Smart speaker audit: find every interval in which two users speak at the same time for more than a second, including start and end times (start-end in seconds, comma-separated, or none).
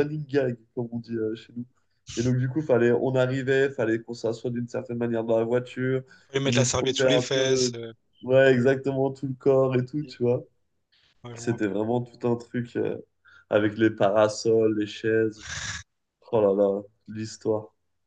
6.5-7.7